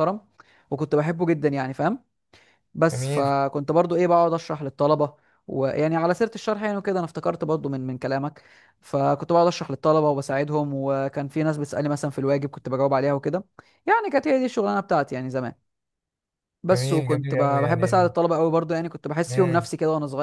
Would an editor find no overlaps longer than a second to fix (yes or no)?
no